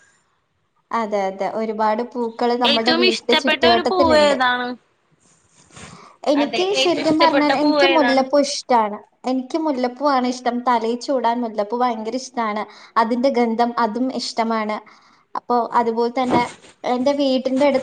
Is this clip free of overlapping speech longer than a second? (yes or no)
no